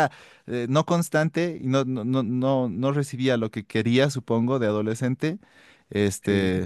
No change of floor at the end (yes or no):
yes